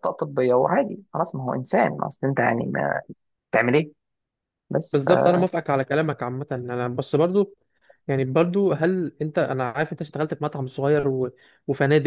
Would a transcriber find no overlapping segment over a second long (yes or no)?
yes